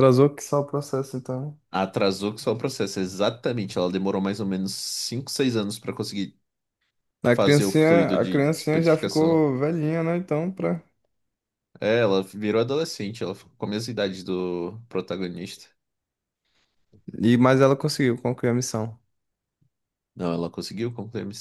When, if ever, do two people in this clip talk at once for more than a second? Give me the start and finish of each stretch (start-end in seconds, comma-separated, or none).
7.3-9.4